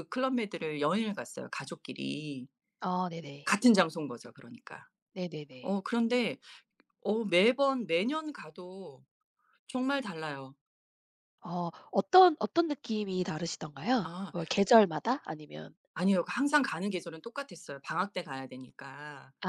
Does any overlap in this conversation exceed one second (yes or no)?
no